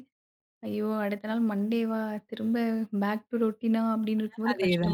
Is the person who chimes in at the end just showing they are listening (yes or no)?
no